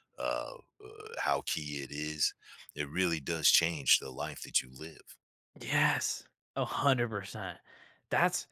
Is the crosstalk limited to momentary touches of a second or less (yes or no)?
yes